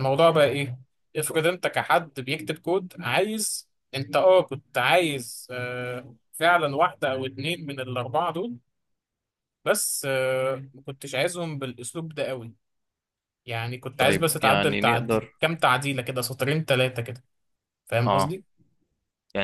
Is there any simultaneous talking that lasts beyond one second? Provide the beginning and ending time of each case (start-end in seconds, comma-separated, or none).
14.0-15.3